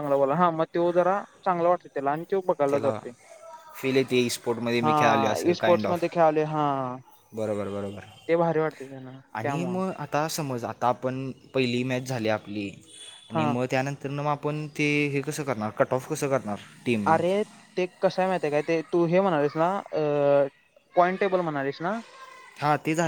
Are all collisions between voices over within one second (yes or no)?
no